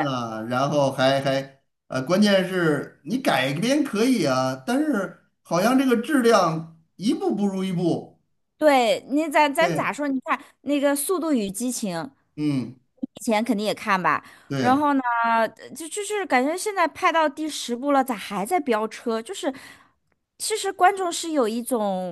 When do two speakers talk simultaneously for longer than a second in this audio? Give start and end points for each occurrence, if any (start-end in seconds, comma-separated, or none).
none